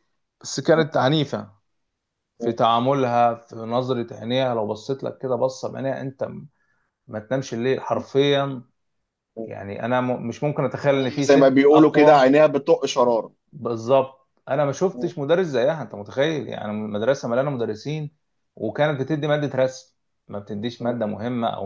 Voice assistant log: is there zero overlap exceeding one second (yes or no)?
no